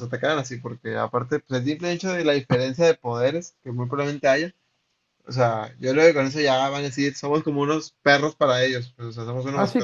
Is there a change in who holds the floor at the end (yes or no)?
yes